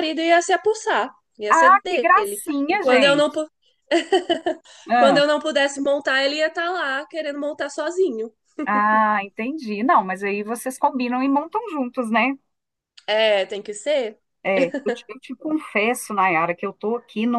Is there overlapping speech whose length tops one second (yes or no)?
yes